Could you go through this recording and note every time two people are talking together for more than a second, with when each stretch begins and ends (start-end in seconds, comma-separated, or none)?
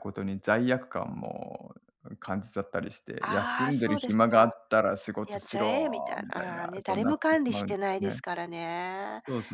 3.2-4.6, 5.3-8.2